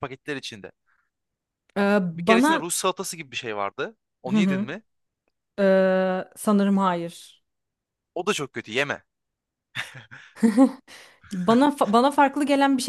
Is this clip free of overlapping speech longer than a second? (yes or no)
yes